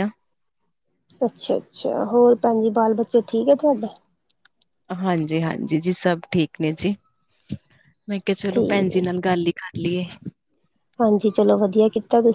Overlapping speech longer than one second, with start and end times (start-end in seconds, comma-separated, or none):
none